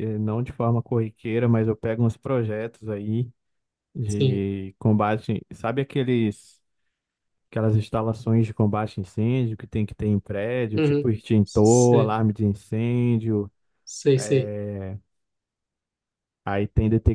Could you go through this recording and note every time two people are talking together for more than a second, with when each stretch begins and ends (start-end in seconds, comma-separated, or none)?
10.7-12.2